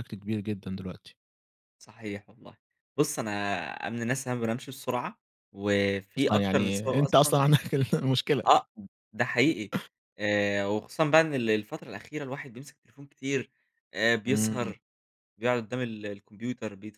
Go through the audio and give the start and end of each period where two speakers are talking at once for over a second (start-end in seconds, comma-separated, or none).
6.2-7.4